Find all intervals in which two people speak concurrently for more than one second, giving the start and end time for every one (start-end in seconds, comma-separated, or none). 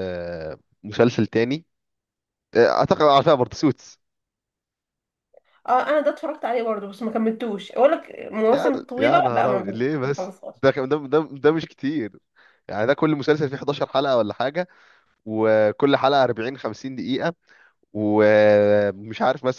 8.5-10.5